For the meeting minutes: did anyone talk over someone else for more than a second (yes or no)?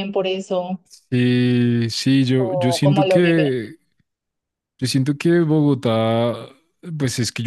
yes